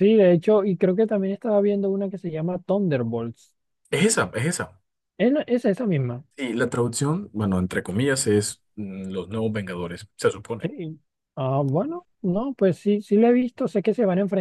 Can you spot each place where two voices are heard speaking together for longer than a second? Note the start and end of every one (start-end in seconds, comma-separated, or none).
none